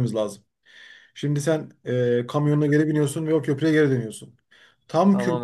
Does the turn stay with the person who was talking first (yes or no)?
yes